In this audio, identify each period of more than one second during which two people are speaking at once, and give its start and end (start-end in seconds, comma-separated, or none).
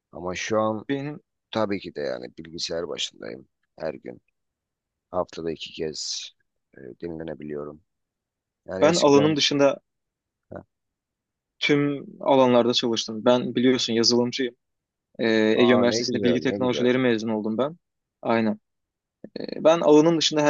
15.6-16.9